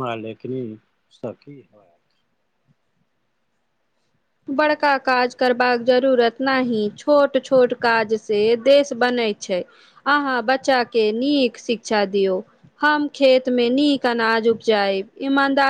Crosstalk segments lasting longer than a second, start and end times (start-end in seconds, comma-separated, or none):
4.6-5.9